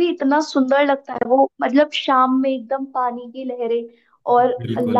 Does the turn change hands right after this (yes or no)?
no